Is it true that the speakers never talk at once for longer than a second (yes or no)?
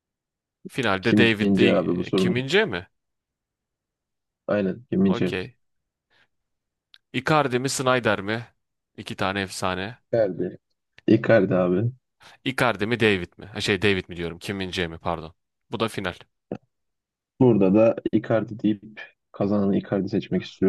no